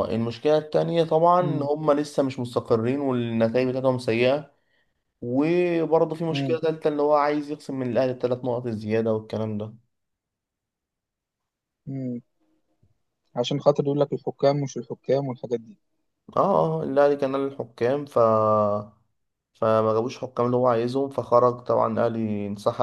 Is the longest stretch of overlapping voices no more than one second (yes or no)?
yes